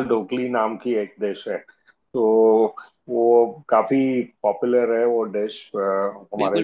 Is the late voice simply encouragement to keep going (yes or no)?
no